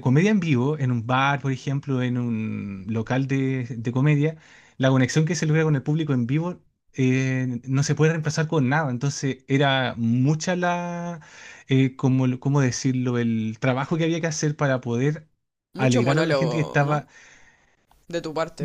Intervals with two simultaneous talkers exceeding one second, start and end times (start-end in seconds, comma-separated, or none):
15.8-17.1